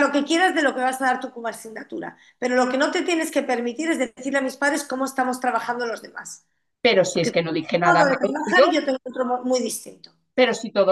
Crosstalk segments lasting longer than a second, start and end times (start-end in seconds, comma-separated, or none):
7.1-8.6